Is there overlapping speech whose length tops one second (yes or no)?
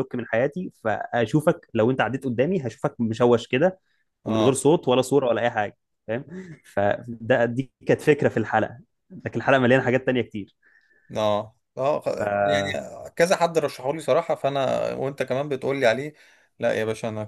no